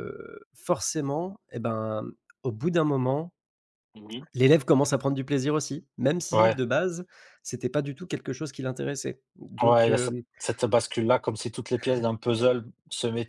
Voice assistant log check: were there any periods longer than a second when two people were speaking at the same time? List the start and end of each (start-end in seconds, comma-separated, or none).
none